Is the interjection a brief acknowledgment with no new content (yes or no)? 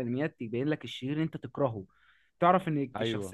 yes